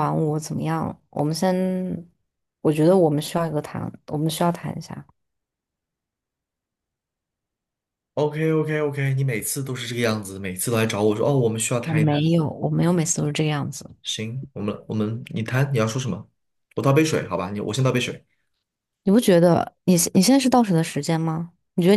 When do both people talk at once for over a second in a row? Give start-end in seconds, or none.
none